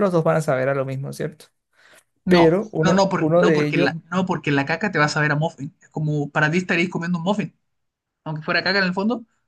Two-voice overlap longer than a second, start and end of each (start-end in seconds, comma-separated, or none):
2.3-3.9